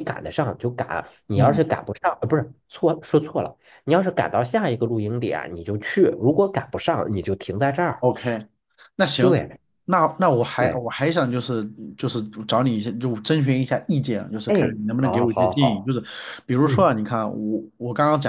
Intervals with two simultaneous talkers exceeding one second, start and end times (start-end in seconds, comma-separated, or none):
14.5-15.9